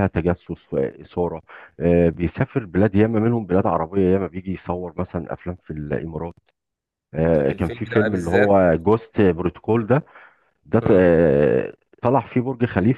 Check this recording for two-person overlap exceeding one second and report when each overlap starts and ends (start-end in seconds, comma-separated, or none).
7.3-8.6